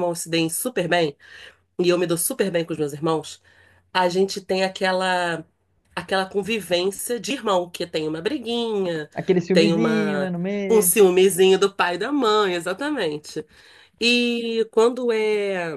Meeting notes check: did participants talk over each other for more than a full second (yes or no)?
yes